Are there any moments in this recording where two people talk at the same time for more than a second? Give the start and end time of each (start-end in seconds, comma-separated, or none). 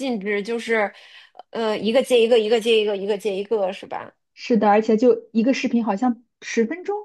none